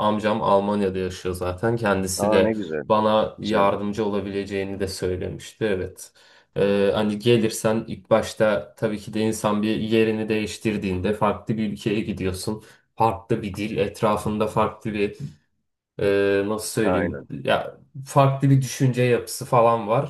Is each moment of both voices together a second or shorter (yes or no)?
yes